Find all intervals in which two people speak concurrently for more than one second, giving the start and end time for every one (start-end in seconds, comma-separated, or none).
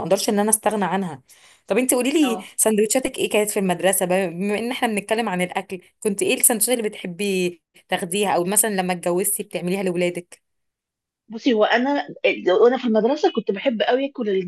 none